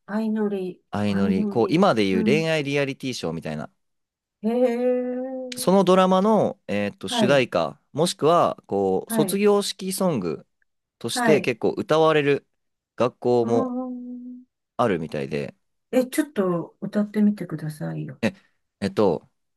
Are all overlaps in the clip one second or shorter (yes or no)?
no